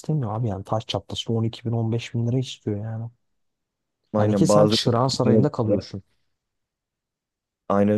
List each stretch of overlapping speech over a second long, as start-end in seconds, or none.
4.2-5.5